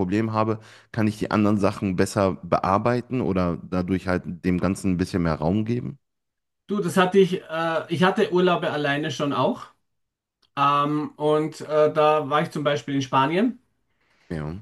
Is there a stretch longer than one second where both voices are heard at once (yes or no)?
no